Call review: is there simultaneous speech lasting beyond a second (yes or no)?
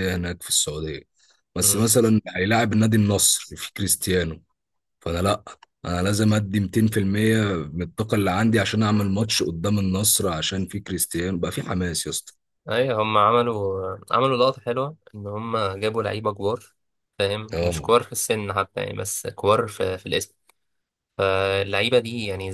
no